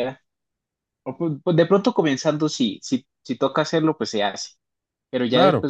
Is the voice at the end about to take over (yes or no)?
no